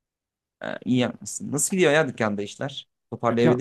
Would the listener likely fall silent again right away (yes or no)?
yes